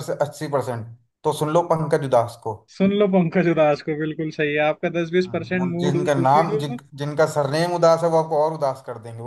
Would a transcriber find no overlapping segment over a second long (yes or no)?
no